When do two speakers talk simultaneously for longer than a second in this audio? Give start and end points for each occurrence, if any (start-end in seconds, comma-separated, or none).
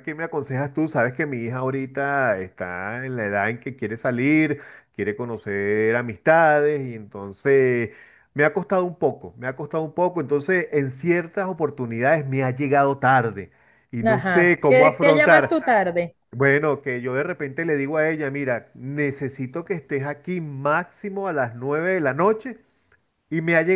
14.0-15.6